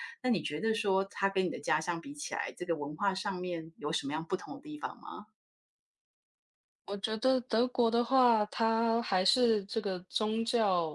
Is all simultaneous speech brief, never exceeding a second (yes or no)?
yes